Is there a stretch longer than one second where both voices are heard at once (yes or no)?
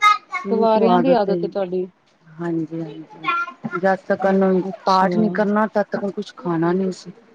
no